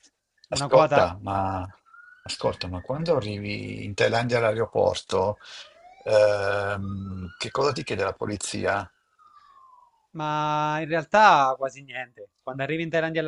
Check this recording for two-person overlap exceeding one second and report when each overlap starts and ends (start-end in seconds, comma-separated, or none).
none